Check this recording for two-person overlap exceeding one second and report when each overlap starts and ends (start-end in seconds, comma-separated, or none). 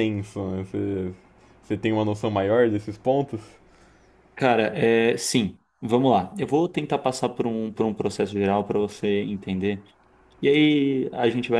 none